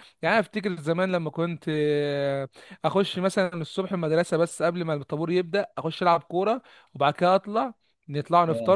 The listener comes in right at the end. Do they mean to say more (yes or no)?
no